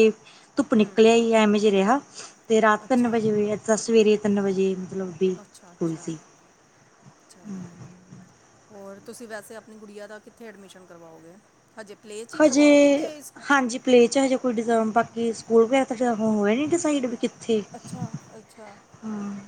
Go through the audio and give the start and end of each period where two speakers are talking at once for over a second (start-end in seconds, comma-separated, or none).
none